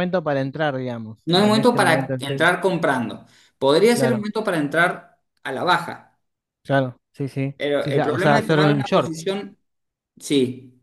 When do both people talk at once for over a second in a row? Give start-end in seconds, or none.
1.3-2.5, 7.6-9.1